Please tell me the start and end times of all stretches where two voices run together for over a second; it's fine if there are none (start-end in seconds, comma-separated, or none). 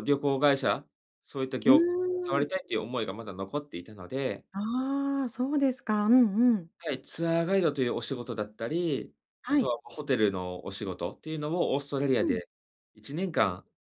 none